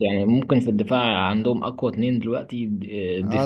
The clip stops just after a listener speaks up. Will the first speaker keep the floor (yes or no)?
no